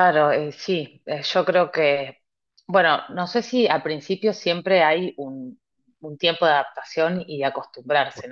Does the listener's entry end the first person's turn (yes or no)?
no